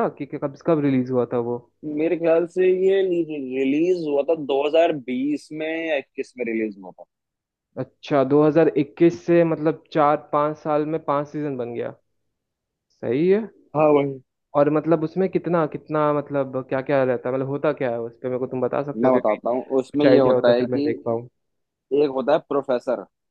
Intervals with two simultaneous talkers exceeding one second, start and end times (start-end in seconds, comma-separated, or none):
18.9-20.9